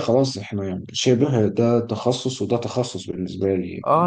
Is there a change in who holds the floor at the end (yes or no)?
yes